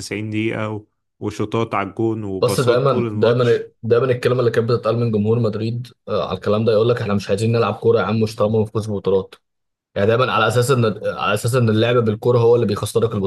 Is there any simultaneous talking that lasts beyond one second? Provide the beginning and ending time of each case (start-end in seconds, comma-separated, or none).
2.4-3.7